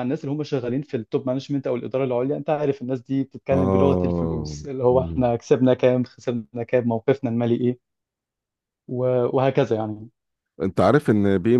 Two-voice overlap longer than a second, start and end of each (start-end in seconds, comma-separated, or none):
3.5-5.3